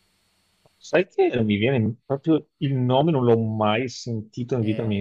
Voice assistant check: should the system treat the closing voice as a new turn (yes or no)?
yes